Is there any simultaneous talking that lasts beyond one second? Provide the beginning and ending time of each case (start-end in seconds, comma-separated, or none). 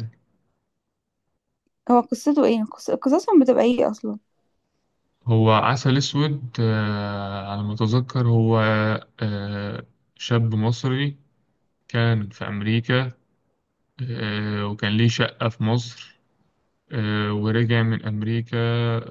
none